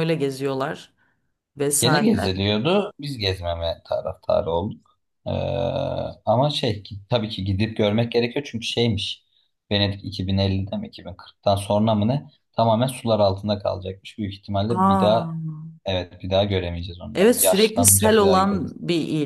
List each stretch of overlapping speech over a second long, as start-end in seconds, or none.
17.1-18.7